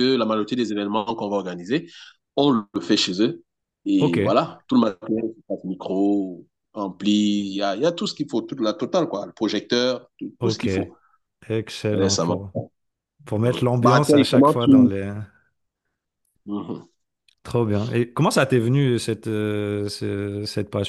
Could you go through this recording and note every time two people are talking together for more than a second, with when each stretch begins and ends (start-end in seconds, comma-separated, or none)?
13.4-14.9